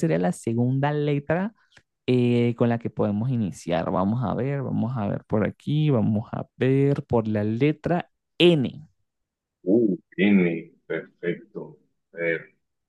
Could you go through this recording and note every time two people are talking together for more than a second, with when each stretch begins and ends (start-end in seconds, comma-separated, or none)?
none